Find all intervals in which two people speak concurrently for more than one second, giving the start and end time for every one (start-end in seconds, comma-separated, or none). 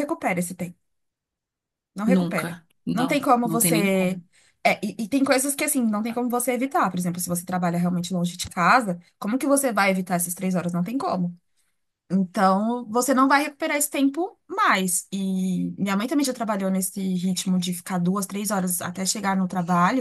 2.0-4.2